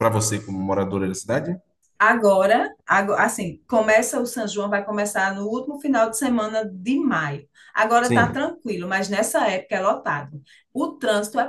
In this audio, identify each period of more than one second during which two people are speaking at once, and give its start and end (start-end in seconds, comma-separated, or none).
none